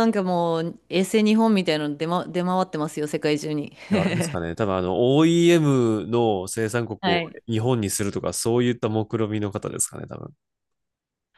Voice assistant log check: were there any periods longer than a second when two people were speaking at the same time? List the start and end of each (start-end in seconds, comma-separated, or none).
none